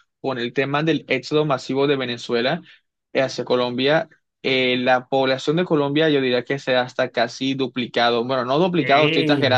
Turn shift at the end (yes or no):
yes